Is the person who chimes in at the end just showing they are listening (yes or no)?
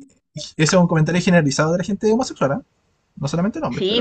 no